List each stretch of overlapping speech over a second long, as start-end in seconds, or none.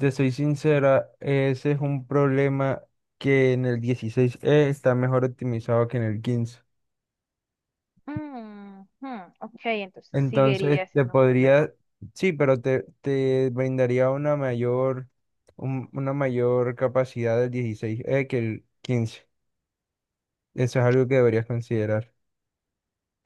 10.1-11.7